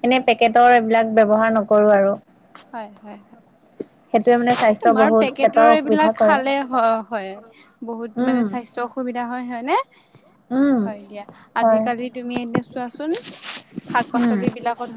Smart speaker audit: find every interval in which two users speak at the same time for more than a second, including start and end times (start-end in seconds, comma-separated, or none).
4.8-6.4